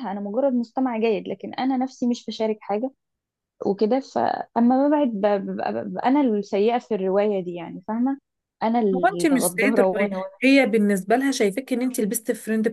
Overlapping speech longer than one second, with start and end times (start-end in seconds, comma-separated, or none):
9.0-10.3